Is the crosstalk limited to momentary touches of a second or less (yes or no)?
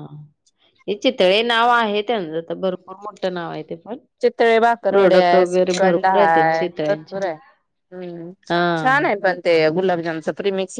no